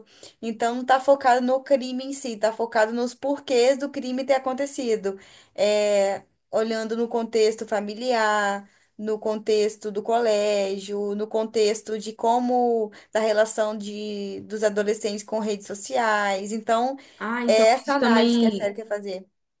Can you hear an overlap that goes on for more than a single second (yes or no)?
yes